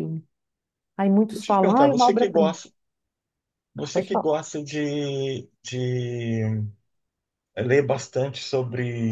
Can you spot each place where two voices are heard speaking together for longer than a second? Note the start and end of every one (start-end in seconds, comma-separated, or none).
1.3-2.5